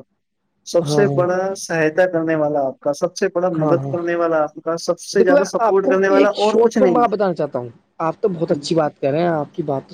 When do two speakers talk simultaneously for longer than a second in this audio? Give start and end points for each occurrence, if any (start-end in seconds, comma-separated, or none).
5.2-7.0